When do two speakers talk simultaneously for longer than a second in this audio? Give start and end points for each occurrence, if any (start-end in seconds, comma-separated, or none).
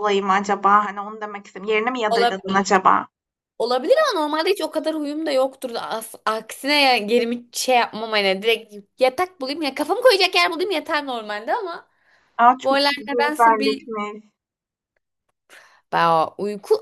12.6-13.9